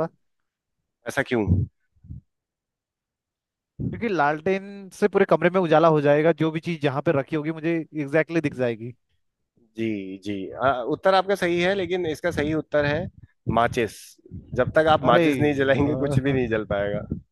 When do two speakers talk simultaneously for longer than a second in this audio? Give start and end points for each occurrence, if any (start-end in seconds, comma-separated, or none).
15.0-16.6